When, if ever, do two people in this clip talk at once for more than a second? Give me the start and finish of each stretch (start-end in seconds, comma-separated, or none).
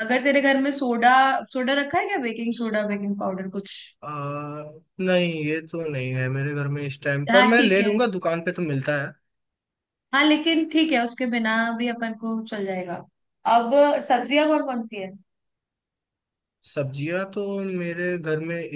none